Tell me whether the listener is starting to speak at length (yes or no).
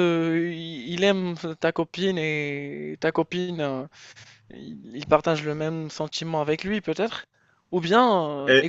yes